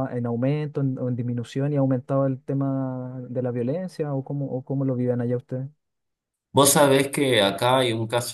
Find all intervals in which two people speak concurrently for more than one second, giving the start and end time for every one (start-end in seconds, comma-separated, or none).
none